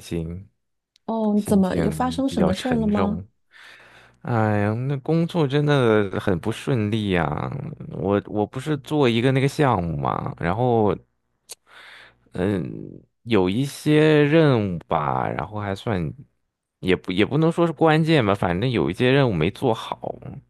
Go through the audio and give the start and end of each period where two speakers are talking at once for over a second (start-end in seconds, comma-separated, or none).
1.4-3.2